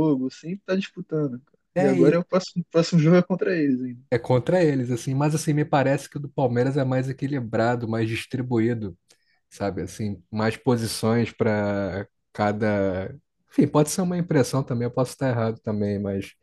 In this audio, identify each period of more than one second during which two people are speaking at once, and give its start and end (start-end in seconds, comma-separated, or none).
none